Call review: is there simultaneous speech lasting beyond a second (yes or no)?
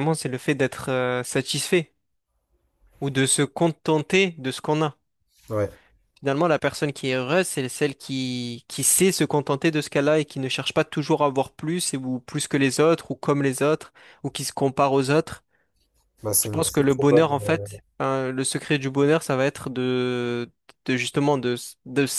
yes